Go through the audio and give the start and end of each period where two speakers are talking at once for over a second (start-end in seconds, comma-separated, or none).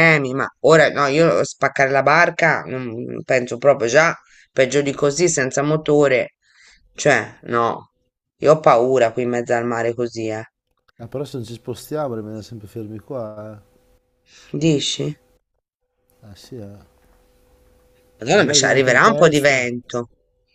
18.3-19.7